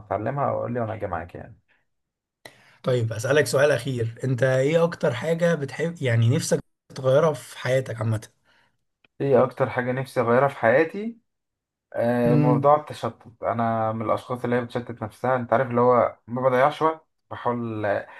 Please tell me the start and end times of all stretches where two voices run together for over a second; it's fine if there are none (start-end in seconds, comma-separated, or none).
none